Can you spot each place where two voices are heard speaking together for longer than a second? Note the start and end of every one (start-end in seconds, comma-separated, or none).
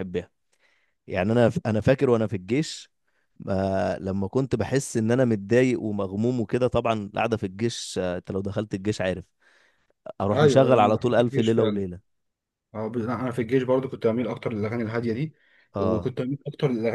10.3-11.8